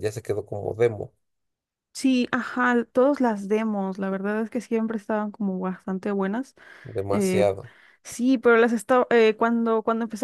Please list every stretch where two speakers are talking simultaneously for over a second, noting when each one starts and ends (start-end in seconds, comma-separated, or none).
none